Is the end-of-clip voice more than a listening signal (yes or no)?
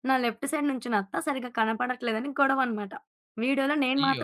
no